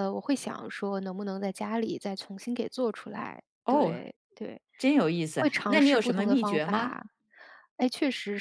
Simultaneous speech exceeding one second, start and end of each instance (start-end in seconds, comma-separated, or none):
5.4-7.0